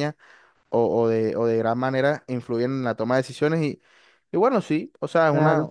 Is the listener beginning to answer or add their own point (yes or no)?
no